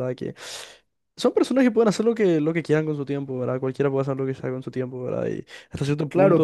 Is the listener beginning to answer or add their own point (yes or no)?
yes